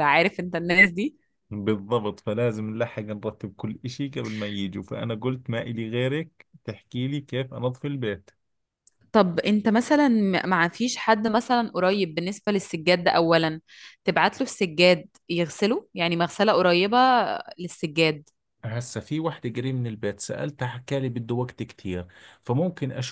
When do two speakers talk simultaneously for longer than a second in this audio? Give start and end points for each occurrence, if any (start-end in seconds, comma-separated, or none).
none